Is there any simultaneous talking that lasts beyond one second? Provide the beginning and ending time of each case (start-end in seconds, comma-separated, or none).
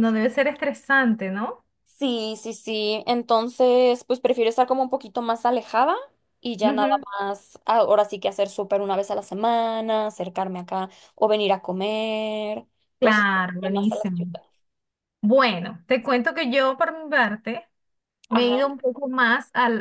13.0-14.4